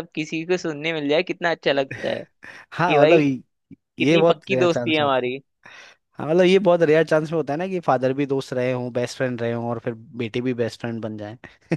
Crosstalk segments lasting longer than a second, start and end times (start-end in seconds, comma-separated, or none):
4.0-5.3